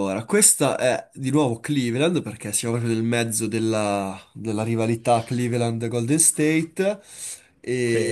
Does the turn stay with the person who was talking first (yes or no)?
yes